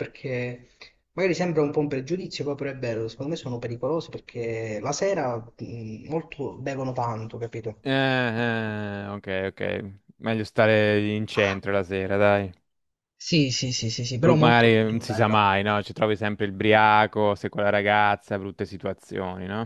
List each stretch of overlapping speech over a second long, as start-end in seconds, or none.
14.2-15.4